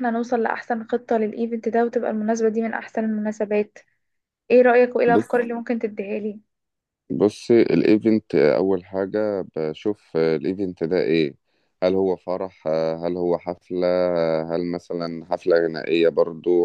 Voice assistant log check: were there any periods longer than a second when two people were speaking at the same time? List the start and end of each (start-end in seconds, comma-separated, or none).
none